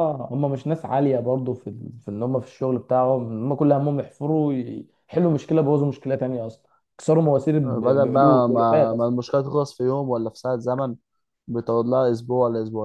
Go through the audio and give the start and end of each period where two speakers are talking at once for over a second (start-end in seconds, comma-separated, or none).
7.6-9.2